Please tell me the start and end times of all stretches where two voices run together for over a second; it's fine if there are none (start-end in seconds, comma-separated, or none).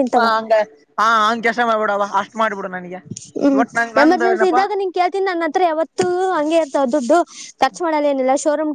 none